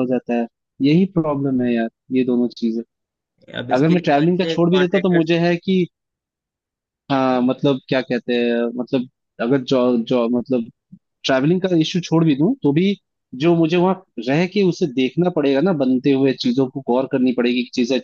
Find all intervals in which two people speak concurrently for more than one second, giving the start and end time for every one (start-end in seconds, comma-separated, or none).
3.8-5.3